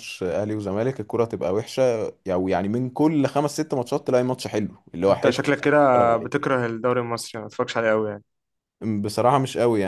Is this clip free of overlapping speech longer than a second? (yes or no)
no